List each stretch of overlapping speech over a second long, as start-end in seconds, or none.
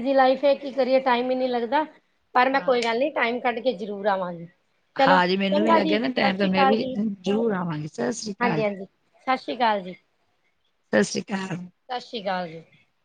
5.1-6.9